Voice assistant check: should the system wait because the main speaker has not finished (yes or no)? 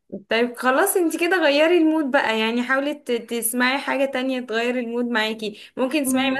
yes